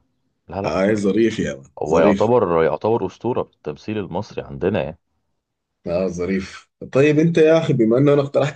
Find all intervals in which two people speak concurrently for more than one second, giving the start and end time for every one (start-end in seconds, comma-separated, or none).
none